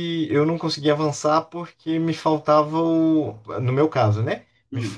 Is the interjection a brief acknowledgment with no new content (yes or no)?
yes